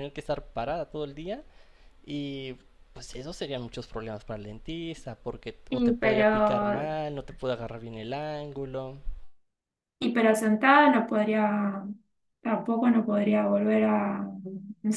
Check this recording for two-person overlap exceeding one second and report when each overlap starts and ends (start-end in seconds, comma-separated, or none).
5.7-6.9